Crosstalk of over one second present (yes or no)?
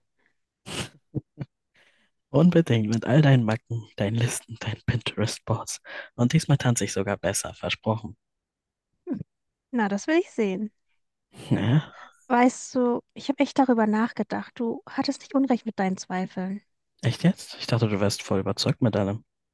no